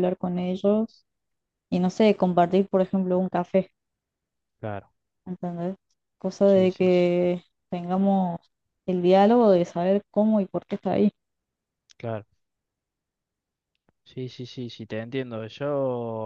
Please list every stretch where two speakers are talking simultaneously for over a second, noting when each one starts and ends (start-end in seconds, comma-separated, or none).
none